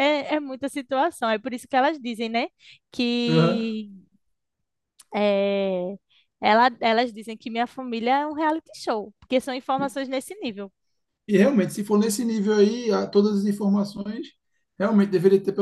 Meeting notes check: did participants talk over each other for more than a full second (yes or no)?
no